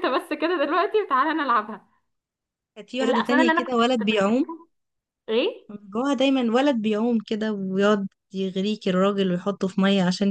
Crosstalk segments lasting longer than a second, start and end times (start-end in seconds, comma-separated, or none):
3.0-4.4